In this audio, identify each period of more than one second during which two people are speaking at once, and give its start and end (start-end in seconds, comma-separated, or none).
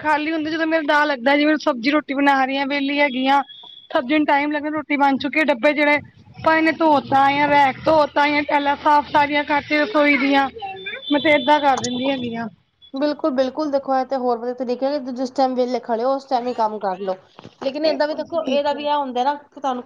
none